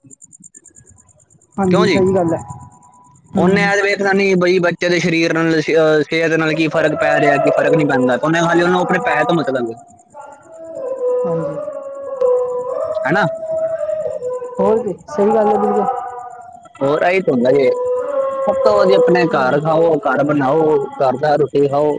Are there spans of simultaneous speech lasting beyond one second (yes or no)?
no